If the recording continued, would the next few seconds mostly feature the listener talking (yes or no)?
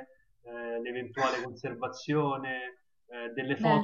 no